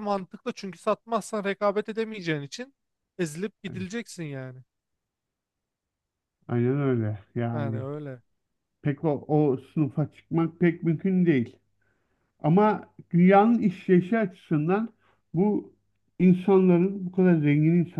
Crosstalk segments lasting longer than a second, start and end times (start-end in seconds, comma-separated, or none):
none